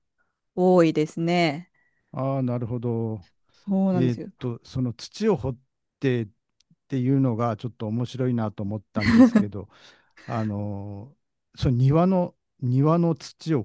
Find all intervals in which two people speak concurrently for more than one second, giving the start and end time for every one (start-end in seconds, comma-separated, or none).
none